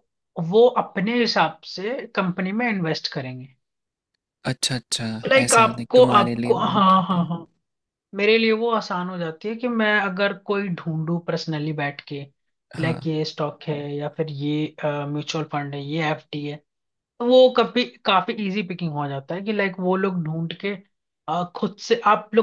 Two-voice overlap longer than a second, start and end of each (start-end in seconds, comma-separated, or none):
5.3-7.3